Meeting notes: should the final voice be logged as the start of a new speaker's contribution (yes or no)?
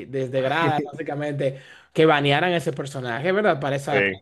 no